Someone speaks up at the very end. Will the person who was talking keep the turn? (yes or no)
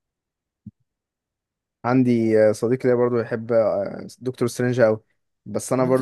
yes